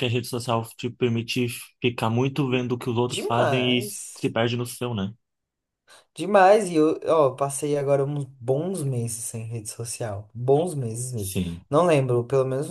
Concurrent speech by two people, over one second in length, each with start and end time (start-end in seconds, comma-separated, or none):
3.1-4.3